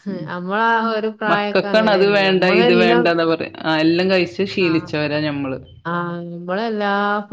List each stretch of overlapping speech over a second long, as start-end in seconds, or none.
1.3-3.1